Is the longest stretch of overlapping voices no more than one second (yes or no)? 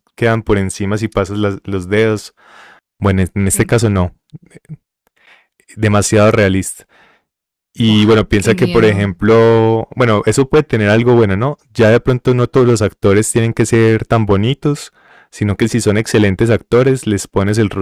no